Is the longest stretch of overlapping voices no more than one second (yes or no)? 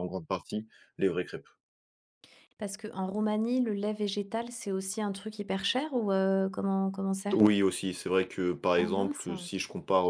yes